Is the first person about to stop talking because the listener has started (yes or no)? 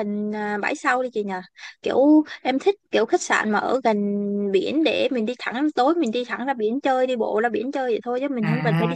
yes